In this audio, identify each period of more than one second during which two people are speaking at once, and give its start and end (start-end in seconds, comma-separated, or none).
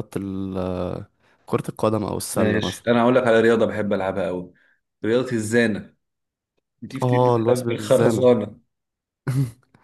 7.0-8.3